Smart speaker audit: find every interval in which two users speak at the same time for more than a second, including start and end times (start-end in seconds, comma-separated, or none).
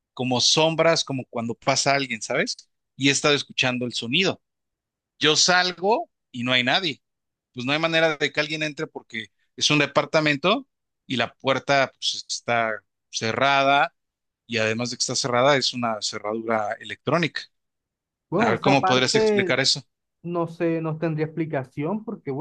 18.4-19.6